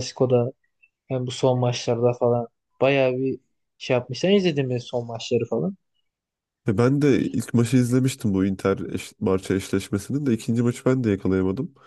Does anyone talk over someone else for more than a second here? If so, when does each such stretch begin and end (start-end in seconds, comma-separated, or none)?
none